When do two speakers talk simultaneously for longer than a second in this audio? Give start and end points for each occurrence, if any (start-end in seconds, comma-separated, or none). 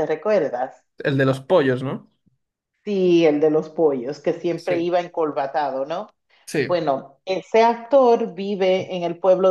none